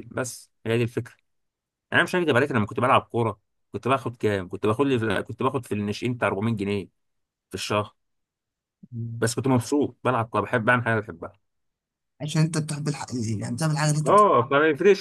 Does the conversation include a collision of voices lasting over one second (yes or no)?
no